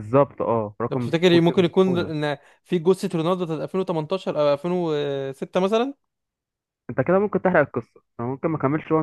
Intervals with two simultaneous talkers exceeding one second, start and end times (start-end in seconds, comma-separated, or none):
0.9-2.1